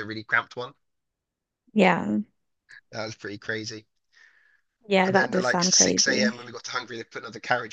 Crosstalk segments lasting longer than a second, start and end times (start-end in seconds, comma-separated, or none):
5.0-6.3